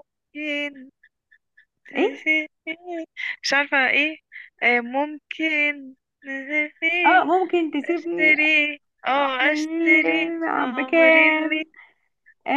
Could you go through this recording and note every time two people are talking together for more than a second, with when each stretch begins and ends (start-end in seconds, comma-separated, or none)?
9.4-11.6